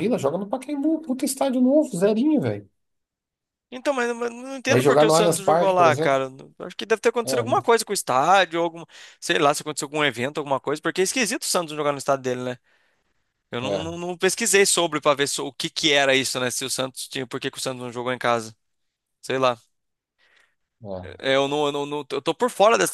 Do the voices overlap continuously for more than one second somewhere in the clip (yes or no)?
yes